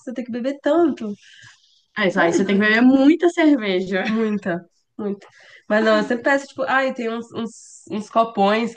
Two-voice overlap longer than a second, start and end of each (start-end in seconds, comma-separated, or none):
none